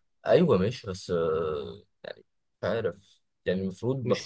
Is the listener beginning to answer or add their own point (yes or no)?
yes